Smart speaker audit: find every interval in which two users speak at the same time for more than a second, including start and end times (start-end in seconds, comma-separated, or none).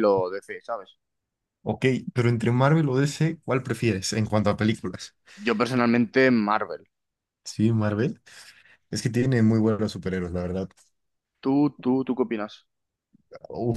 none